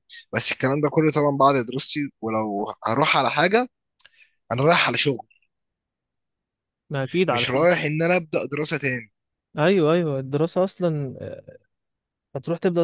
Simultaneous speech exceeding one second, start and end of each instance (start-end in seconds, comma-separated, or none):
none